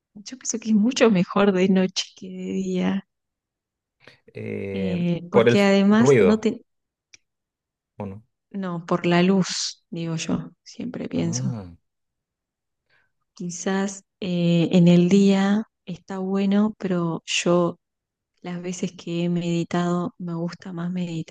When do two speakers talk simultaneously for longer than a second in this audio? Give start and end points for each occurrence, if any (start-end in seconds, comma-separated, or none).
4.7-6.5